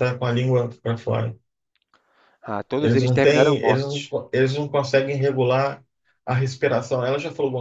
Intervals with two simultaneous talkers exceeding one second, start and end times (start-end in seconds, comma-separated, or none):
2.8-4.1